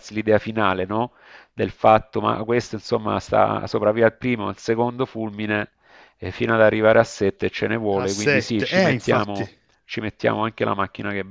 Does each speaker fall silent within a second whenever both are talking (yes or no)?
no